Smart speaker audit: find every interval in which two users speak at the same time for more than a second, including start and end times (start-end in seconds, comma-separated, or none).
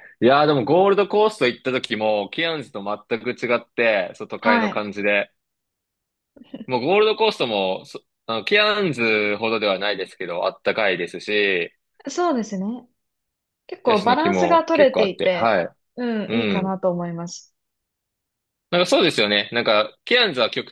13.8-15.6